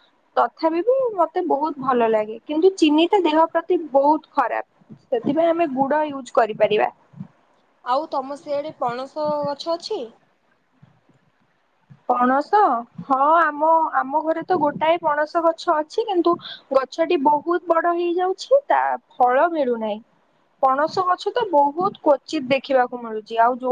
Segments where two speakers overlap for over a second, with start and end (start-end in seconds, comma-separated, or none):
none